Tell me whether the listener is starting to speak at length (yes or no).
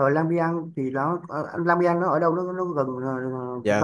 yes